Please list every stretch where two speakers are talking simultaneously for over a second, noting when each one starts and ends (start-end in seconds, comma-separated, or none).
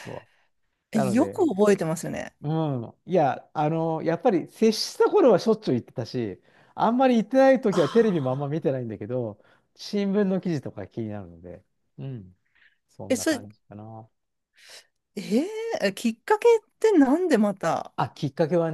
none